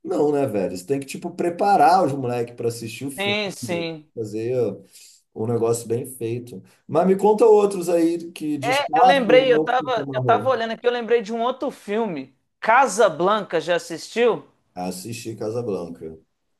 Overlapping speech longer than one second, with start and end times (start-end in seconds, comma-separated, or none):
8.6-10.5